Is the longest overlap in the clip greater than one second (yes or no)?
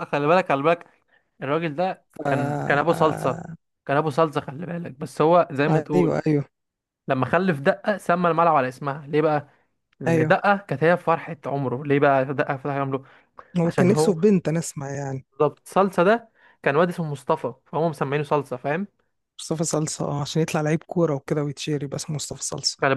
yes